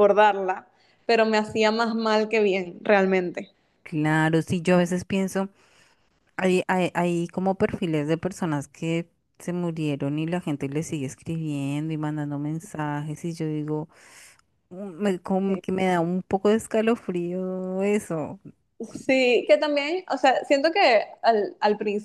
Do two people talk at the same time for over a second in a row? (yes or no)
no